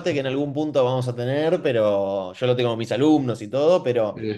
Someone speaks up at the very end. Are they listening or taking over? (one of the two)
listening